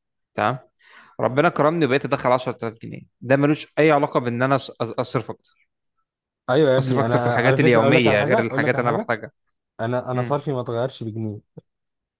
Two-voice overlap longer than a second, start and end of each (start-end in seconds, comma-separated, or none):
6.8-9.1